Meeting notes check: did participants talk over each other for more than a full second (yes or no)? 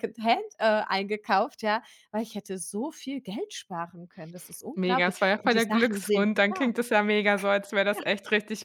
yes